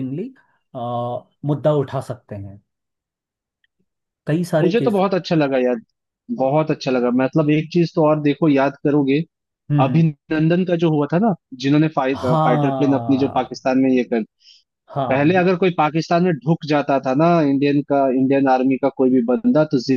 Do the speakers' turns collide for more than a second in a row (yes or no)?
yes